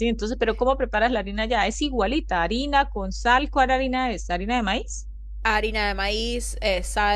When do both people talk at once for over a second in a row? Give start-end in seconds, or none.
none